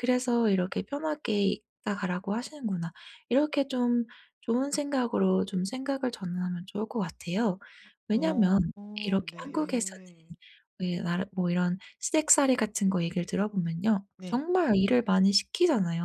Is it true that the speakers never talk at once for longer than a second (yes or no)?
no